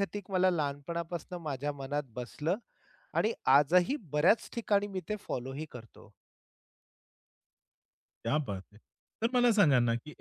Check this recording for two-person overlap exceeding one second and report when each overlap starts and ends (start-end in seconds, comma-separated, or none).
none